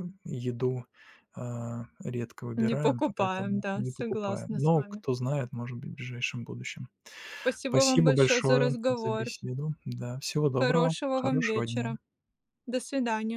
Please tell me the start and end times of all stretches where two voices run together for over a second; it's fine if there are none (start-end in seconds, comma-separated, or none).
2.5-5.0, 7.7-9.3, 10.6-12.0